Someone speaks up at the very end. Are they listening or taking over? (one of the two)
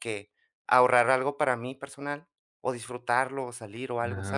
taking over